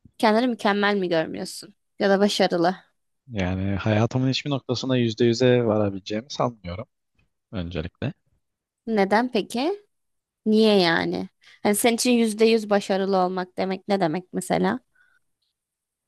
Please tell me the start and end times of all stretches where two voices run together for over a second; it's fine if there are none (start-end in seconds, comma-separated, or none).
none